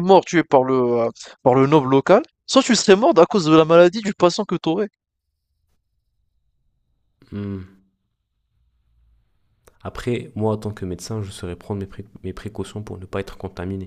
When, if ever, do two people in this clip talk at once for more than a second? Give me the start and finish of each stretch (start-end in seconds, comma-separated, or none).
none